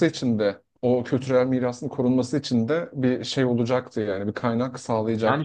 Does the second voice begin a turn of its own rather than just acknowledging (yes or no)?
yes